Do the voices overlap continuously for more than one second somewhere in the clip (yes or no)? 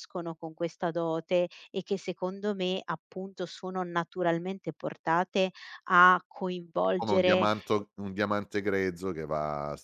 no